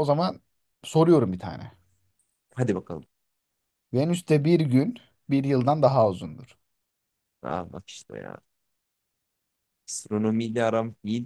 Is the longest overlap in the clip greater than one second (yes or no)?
no